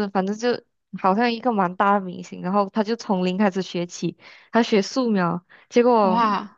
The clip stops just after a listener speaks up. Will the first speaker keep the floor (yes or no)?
yes